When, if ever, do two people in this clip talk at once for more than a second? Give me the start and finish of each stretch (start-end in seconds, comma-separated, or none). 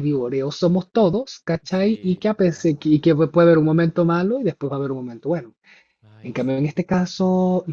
1.7-3.0